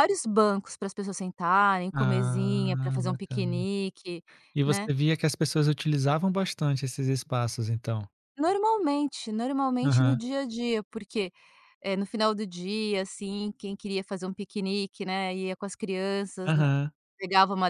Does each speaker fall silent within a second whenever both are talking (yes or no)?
no